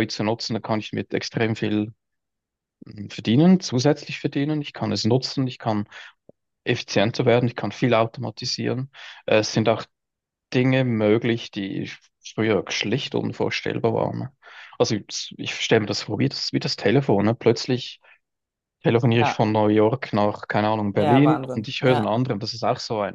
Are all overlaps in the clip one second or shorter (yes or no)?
no